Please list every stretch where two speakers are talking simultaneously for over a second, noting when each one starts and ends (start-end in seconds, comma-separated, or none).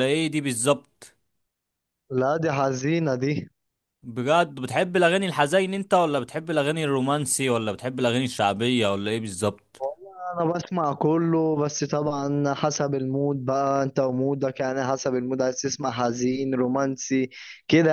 none